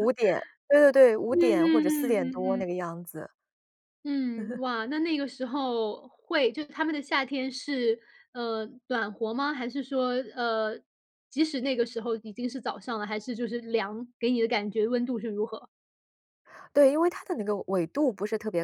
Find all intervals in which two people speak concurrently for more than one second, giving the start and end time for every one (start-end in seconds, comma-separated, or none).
1.3-2.7